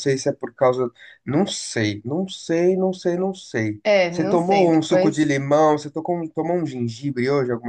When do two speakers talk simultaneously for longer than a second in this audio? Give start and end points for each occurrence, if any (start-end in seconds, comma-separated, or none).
3.8-5.3